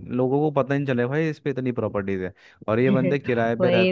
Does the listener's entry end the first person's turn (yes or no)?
no